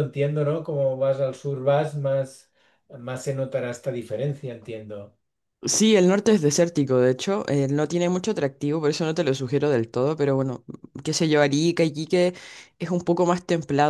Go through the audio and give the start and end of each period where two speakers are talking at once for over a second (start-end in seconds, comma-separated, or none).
none